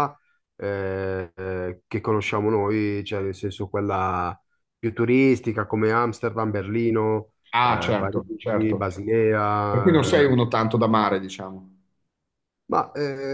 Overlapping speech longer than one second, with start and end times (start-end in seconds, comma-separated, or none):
7.5-8.9